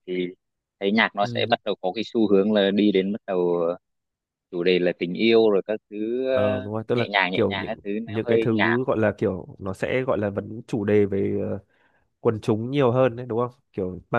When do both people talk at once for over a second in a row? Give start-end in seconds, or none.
6.3-8.8